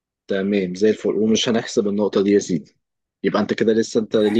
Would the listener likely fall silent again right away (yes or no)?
yes